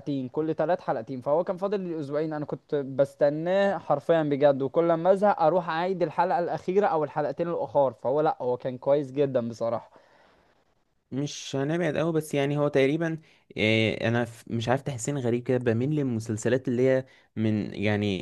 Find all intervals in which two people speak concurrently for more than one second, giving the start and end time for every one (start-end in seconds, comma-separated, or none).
none